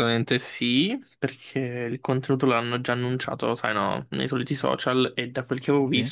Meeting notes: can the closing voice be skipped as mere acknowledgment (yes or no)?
yes